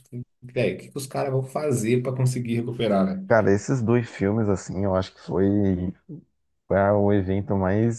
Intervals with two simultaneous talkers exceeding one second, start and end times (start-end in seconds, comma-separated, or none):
none